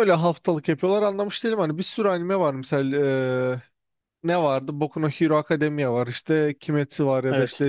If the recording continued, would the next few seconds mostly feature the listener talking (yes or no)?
no